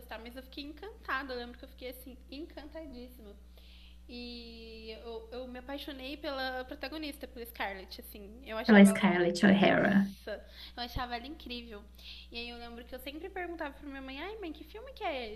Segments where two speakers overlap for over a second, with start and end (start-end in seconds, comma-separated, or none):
none